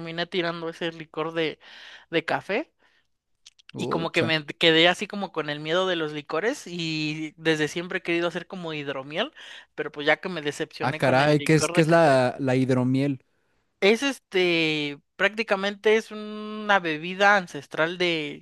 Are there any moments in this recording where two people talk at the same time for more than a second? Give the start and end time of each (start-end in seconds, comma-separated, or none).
10.8-12.2